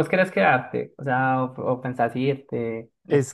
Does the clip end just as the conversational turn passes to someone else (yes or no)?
yes